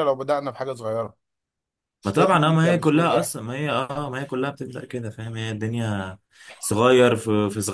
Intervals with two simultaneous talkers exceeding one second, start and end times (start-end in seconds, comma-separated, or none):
2.0-3.4